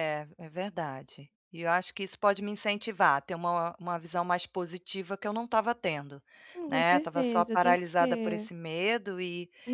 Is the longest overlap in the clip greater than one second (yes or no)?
yes